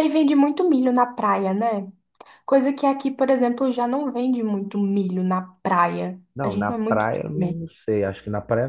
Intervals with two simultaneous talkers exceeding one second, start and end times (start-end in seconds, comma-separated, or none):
6.3-7.6